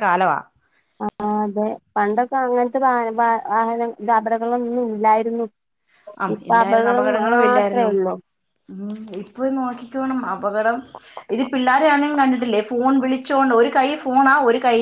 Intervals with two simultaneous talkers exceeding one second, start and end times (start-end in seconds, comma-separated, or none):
6.3-7.9